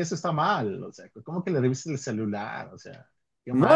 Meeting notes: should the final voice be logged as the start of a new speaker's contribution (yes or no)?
yes